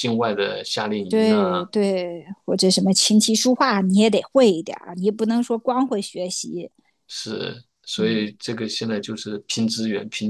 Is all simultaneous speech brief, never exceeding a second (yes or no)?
yes